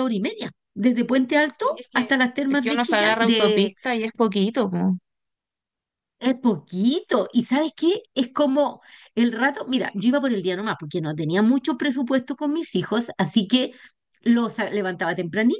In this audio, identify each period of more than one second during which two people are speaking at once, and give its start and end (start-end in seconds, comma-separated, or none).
1.5-3.2